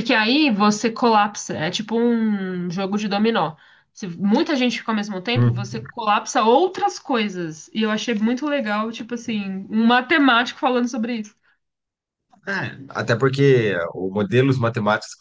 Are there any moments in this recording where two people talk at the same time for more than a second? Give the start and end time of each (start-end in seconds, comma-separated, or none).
none